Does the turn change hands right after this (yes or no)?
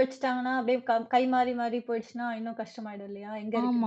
yes